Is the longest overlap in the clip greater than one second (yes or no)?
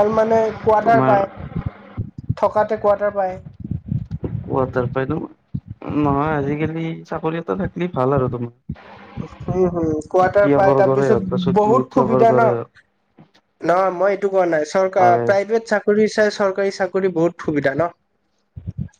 yes